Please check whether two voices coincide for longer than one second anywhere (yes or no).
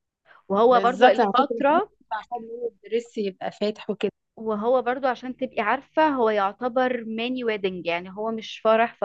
yes